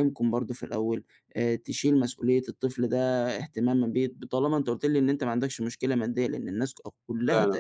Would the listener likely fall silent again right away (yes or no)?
yes